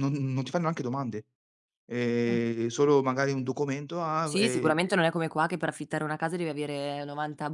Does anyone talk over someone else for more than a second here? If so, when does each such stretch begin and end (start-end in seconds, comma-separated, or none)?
none